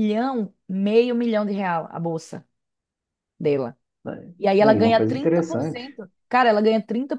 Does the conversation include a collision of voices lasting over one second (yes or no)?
yes